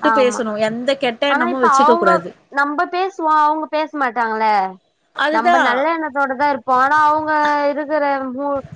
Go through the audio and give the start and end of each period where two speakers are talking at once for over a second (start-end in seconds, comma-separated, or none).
none